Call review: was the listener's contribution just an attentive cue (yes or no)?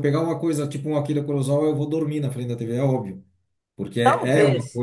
no